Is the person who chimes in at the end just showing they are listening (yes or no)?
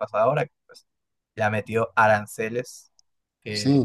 no